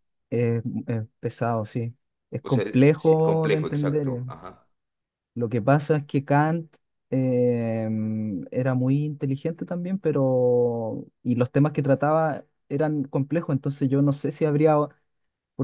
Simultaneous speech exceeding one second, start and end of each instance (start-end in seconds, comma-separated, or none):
2.4-4.2